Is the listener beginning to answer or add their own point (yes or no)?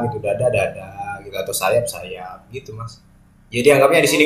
no